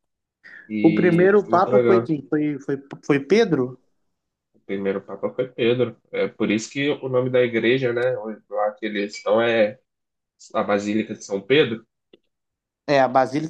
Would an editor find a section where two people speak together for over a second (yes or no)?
yes